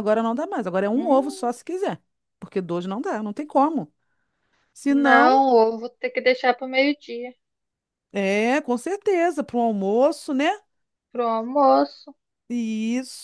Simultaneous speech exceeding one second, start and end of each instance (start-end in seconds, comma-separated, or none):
none